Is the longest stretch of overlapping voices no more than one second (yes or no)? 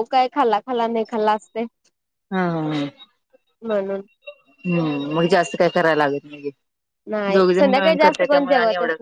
yes